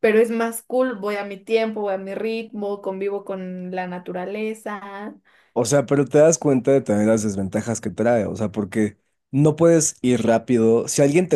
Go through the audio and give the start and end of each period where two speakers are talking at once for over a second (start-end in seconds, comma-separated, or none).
none